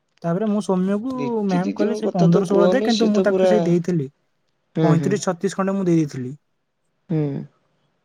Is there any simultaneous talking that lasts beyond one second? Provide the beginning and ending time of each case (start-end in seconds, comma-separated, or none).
1.6-3.5